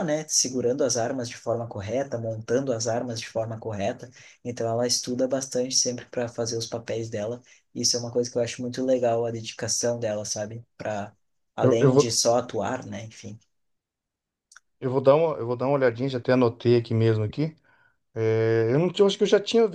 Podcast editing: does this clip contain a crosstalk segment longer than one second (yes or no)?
no